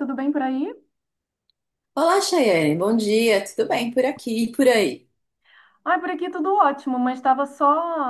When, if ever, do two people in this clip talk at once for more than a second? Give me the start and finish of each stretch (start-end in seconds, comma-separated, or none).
none